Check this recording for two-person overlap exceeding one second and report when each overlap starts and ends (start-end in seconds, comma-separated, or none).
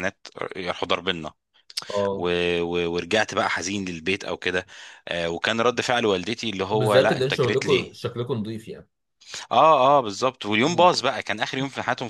6.7-8.0